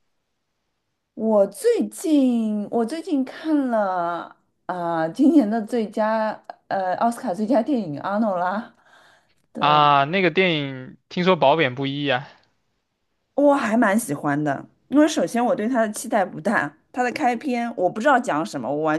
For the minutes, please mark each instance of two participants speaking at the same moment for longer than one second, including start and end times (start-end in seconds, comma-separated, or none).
none